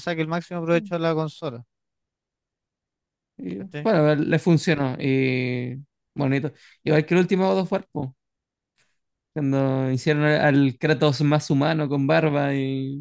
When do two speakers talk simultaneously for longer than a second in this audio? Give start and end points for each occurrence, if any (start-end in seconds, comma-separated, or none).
none